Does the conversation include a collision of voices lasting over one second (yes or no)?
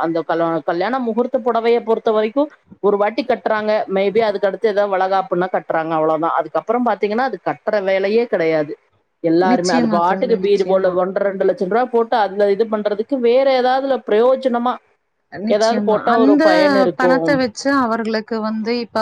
yes